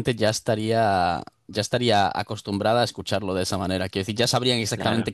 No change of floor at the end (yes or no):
yes